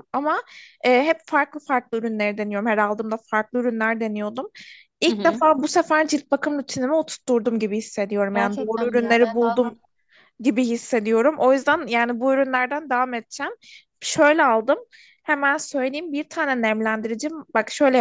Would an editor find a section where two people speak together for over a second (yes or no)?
yes